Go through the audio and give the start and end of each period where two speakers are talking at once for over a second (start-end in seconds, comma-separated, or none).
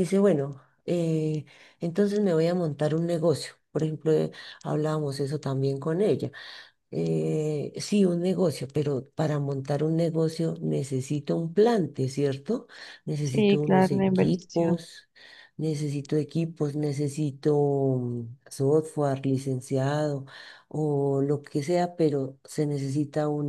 13.2-14.8